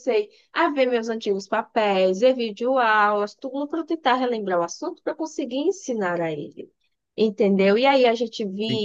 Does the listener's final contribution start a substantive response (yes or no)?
no